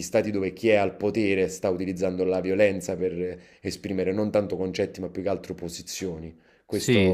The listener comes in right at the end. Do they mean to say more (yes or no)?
yes